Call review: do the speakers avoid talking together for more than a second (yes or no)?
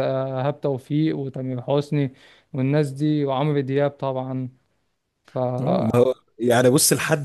yes